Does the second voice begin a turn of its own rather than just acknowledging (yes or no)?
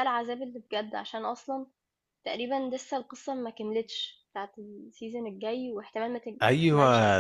yes